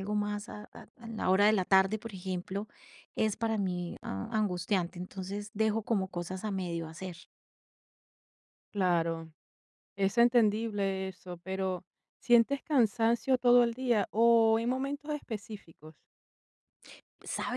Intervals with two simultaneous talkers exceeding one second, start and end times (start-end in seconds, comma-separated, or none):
none